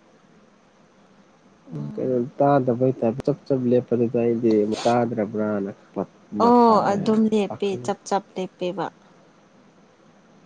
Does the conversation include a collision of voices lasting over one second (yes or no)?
no